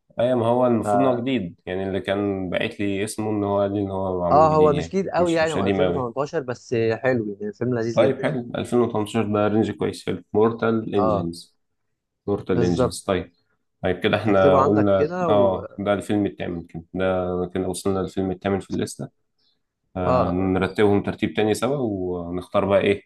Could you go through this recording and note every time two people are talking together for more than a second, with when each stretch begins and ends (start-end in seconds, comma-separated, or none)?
4.3-6.1, 14.2-15.8